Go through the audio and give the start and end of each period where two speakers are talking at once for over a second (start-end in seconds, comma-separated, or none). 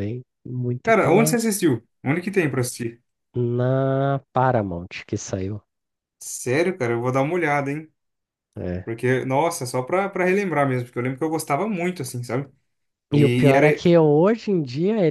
none